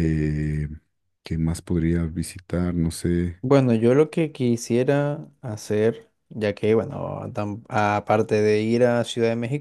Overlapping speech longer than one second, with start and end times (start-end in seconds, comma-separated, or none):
none